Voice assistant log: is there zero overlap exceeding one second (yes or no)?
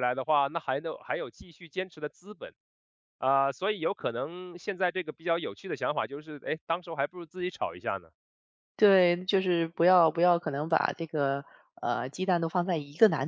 yes